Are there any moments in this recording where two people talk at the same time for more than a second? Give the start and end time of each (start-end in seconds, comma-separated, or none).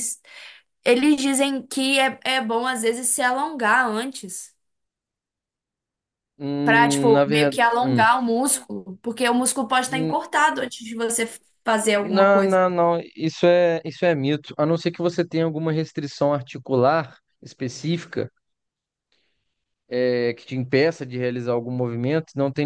6.6-8.0